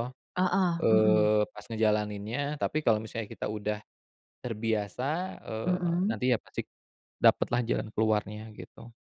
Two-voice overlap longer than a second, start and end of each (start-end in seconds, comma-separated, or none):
none